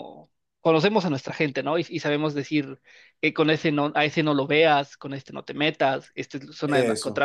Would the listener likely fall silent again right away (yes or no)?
yes